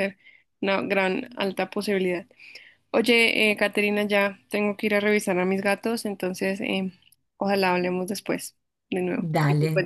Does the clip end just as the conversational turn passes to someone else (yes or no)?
yes